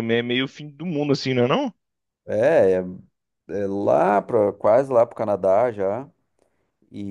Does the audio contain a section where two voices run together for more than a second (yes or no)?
no